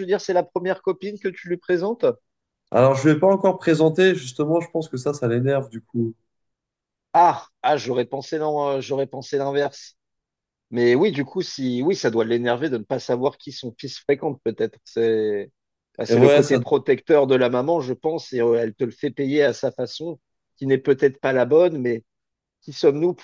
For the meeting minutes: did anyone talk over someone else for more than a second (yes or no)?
no